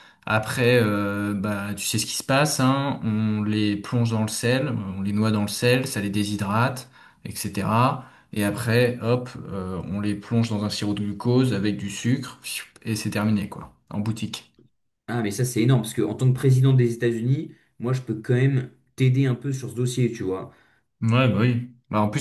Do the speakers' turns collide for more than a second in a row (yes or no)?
no